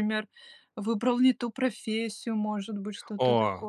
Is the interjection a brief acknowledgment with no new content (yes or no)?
no